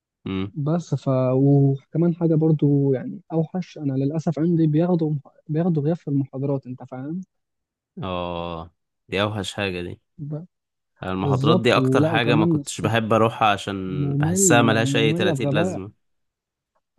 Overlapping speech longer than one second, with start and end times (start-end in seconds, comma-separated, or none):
11.2-12.9, 13.9-15.8